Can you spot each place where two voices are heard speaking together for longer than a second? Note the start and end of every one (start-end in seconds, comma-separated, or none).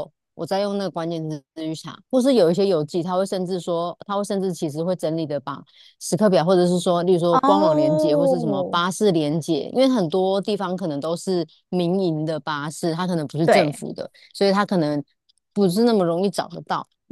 7.3-8.8